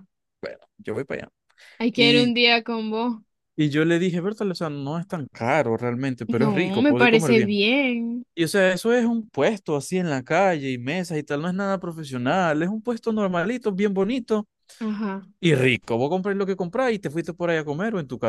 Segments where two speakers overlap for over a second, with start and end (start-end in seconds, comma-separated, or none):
6.3-7.6